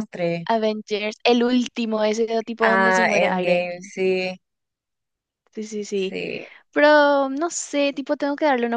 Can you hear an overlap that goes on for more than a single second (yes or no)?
yes